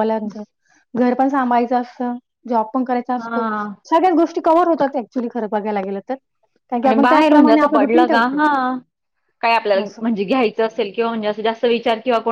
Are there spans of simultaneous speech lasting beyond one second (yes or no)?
yes